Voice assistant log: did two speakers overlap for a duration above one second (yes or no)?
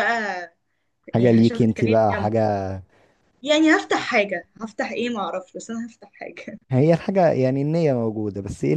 yes